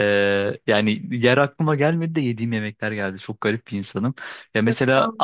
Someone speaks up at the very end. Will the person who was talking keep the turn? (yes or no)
yes